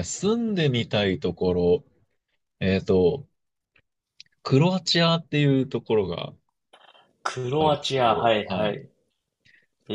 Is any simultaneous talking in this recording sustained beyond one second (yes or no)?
yes